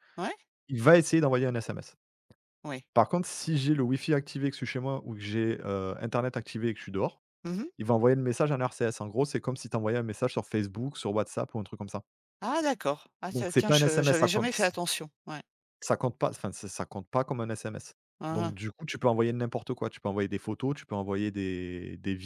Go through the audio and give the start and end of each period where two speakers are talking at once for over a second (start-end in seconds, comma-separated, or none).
13.3-14.5